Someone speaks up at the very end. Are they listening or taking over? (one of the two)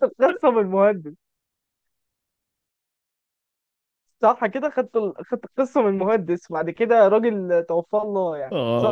taking over